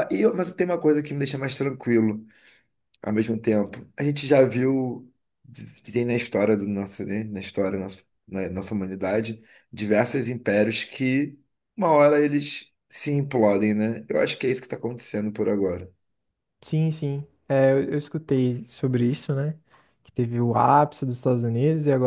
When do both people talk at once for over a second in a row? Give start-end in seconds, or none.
none